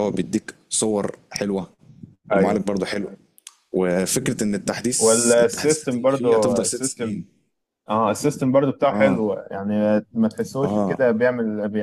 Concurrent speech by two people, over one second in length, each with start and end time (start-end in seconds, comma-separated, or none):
5.0-7.2